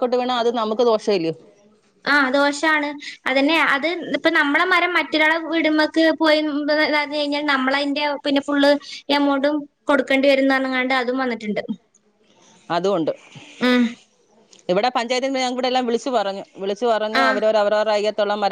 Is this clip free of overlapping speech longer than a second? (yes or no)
yes